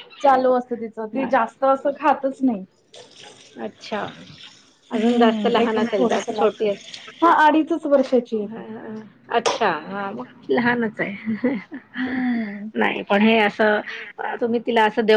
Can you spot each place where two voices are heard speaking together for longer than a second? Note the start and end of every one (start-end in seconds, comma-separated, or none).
5.0-6.7